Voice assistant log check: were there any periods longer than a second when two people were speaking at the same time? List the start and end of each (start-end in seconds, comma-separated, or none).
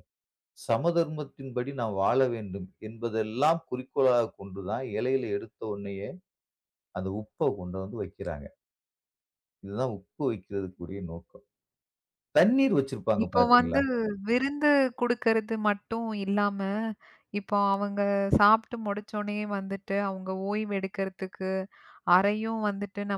none